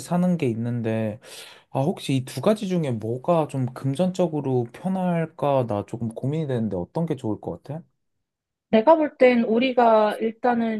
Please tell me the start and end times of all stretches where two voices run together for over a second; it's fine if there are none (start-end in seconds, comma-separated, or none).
none